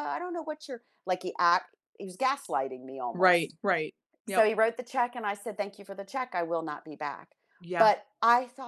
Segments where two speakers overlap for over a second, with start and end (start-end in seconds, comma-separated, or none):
none